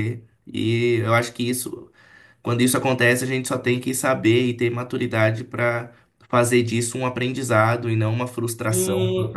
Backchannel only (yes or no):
no